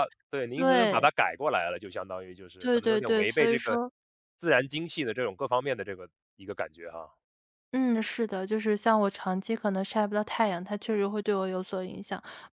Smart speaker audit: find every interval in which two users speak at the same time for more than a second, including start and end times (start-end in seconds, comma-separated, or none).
2.6-3.8